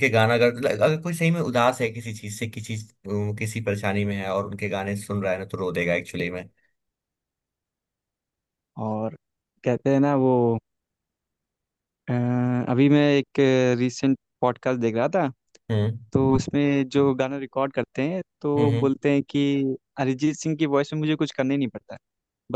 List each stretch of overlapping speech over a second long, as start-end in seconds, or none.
none